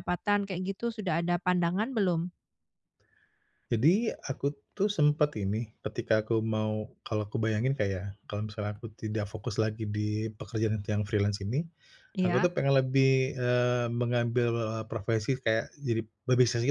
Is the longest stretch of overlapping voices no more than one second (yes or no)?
yes